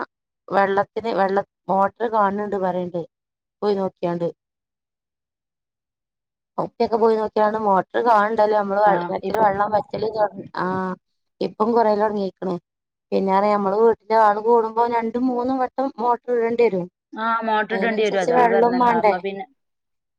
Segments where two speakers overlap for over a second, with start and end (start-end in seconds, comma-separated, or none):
17.6-19.1